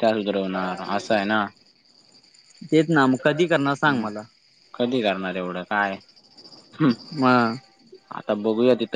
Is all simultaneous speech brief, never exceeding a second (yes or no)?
yes